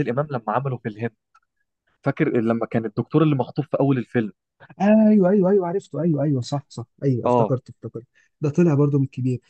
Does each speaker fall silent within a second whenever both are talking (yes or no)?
yes